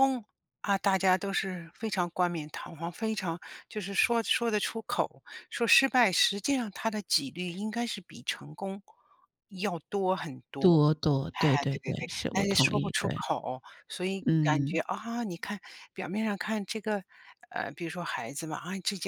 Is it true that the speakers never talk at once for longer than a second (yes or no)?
no